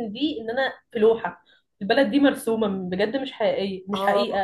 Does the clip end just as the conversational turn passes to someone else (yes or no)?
yes